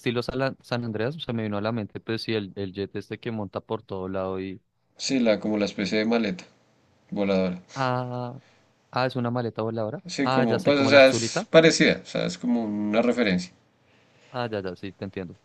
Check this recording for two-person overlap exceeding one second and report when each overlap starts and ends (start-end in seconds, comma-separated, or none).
10.1-11.5